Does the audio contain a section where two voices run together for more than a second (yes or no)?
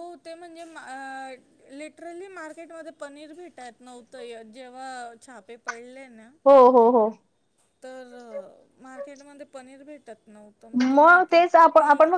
no